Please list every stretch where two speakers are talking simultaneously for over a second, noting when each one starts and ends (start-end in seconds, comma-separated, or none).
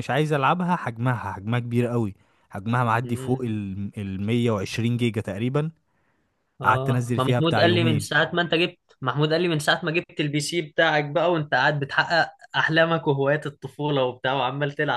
6.6-8.2